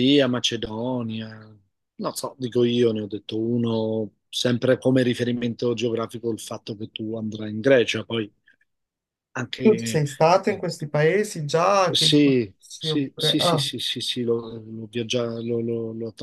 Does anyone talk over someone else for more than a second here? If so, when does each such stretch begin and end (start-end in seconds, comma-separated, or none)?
11.9-13.7